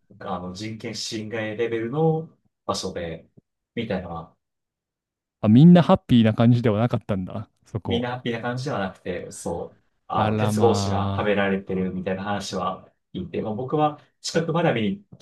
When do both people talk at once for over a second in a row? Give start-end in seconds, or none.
10.2-11.5